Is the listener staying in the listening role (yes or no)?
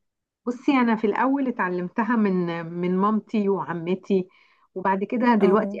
yes